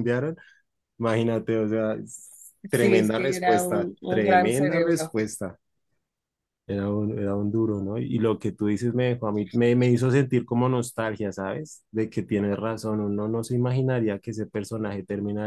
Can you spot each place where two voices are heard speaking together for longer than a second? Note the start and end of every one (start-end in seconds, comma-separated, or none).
2.7-5.2